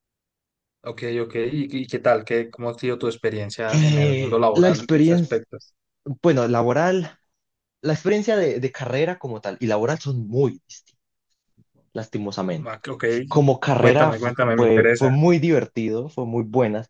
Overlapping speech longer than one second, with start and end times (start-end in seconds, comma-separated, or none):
3.7-5.4, 13.8-15.1